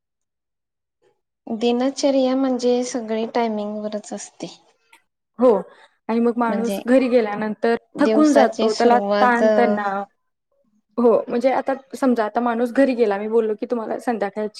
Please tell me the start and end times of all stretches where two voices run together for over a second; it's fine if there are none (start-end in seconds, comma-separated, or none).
8.0-9.4